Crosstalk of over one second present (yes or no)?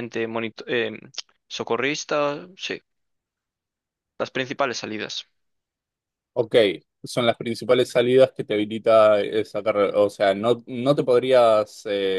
no